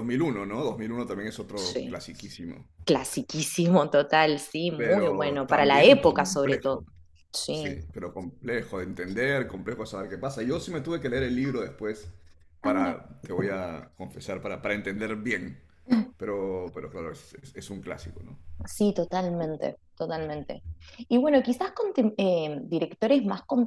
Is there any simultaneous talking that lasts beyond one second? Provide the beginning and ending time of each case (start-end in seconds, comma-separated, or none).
4.8-6.8